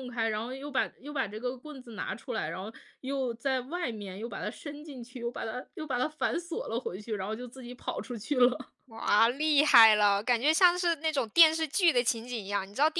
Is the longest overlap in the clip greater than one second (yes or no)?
no